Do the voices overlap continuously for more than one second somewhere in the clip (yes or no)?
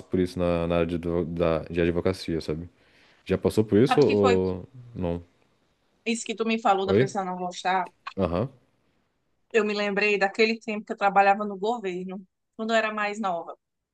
no